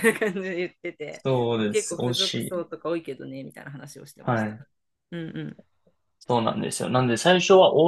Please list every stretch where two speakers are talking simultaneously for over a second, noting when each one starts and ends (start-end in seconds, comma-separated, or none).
1.1-2.7